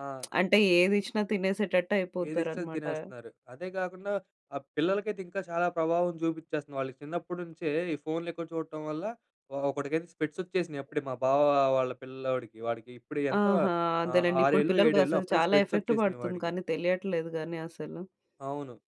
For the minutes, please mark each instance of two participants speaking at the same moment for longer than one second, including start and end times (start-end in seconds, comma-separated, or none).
14.1-16.5